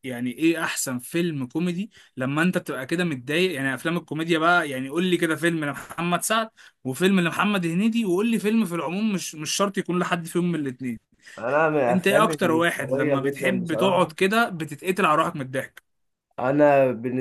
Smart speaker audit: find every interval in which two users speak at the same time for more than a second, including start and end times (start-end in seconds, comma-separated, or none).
11.9-14.1